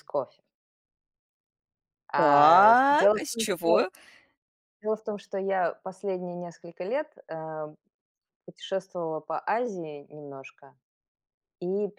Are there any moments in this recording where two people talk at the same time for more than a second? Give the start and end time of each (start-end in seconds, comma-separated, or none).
2.1-3.7